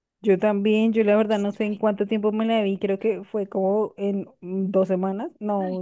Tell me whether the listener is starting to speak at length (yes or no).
yes